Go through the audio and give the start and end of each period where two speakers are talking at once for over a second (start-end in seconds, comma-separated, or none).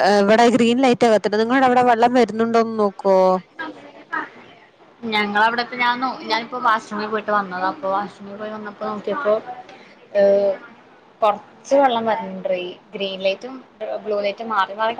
none